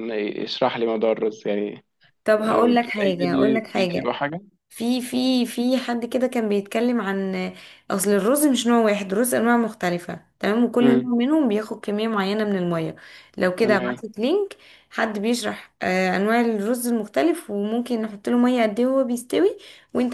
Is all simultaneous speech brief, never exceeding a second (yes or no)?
no